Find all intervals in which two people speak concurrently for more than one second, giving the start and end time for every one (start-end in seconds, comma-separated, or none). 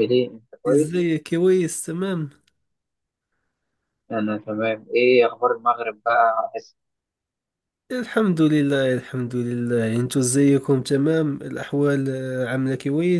none